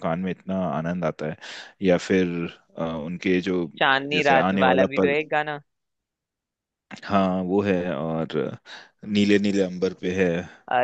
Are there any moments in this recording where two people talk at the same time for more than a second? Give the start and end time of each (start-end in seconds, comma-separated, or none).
3.8-5.2